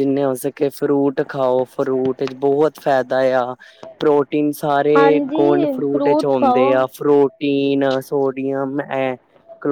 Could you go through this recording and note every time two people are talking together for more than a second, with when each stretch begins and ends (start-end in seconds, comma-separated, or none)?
5.0-6.7